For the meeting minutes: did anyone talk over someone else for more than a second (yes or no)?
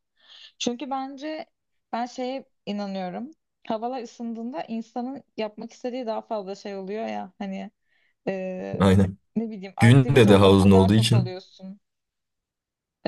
yes